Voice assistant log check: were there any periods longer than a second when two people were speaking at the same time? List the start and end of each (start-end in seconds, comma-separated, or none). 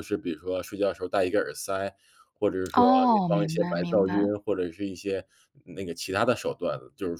2.7-4.3